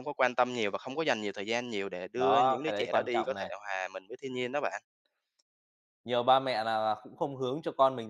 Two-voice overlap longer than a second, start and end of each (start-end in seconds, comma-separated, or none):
2.2-3.5